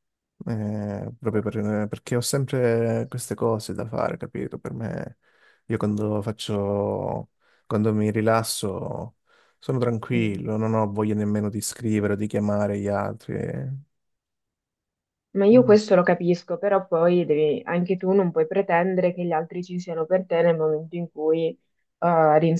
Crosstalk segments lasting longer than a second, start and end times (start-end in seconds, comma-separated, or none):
none